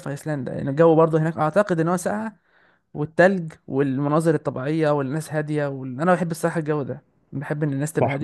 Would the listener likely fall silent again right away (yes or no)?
no